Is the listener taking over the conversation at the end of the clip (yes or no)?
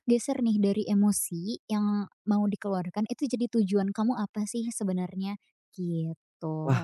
yes